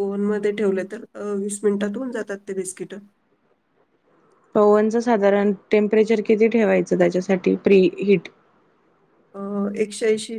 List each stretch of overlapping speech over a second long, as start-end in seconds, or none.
none